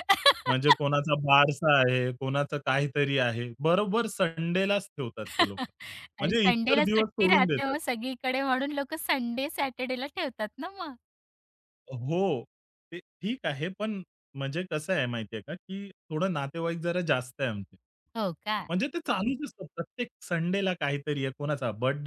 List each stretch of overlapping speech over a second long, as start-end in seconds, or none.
6.2-7.8